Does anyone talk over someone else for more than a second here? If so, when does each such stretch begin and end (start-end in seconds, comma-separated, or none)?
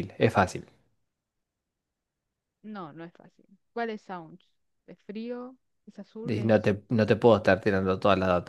none